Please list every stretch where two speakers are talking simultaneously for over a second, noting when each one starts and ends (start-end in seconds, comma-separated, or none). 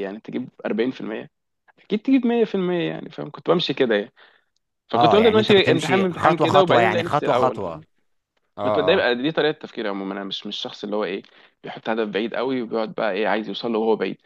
4.9-7.7